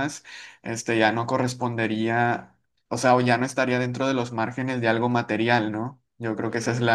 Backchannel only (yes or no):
yes